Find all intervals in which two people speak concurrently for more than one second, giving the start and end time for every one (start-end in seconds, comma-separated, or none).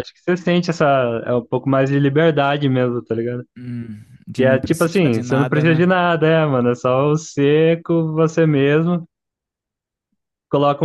4.3-5.9